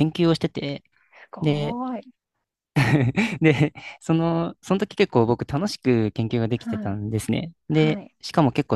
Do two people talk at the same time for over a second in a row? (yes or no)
no